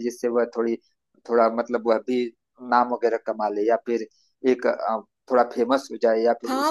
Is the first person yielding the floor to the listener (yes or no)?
yes